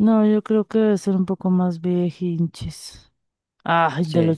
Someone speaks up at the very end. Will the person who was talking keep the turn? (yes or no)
yes